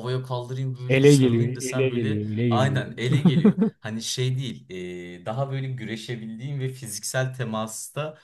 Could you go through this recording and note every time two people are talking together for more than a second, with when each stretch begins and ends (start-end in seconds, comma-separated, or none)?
0.9-2.8